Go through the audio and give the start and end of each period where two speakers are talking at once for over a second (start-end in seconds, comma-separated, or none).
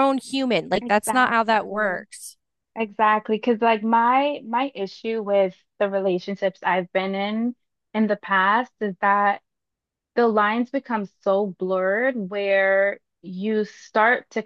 0.8-2.1